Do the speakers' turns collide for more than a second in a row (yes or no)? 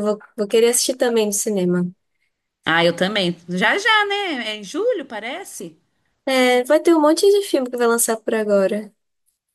no